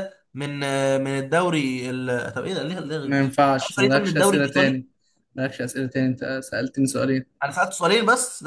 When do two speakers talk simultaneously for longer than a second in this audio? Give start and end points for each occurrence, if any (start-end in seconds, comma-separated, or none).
3.0-4.8